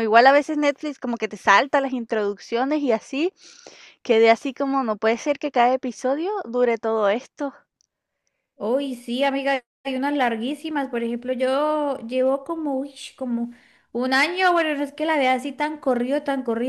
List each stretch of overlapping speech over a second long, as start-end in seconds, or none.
none